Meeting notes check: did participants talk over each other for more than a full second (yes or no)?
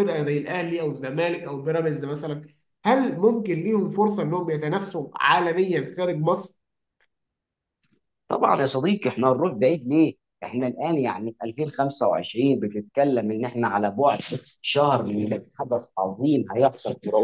no